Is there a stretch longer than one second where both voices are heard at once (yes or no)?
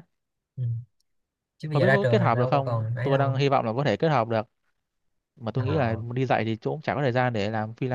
yes